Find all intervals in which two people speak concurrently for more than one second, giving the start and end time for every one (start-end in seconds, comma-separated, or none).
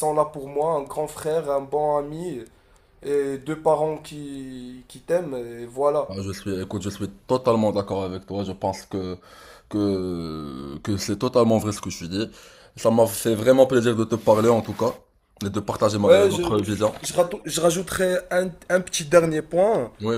none